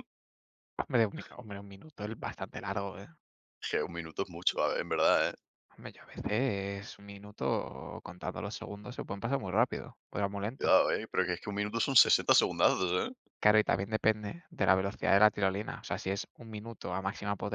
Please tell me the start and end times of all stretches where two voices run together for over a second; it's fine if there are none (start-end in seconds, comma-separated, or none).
none